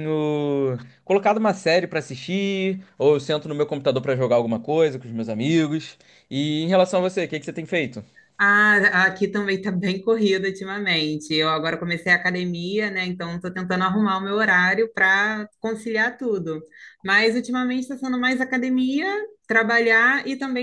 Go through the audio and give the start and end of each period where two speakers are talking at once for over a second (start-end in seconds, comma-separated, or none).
none